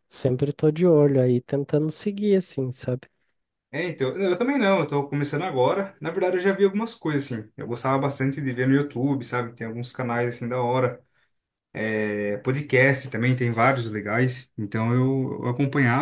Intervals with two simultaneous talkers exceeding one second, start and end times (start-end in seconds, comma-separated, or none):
none